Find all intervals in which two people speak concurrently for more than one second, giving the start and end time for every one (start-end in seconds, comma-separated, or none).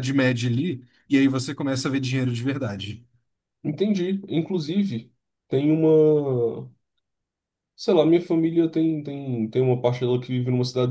none